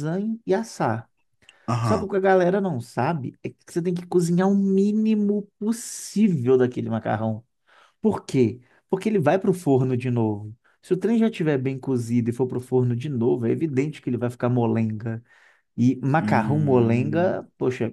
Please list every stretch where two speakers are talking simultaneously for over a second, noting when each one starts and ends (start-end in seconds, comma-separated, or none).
16.2-17.4